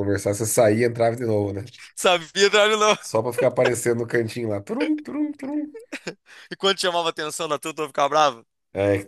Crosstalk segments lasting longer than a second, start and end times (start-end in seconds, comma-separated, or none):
none